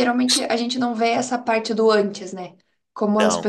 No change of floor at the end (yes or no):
yes